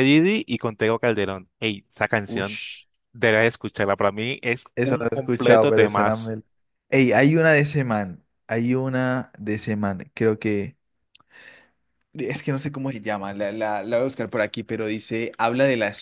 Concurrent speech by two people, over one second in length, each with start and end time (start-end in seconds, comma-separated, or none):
4.8-6.3